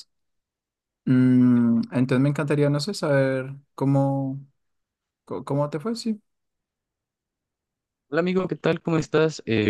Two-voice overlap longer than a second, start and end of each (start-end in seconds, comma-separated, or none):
none